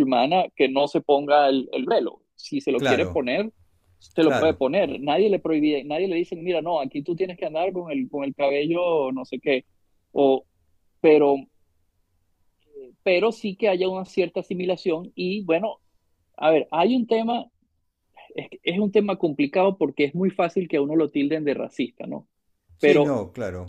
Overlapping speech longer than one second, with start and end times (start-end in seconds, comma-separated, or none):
none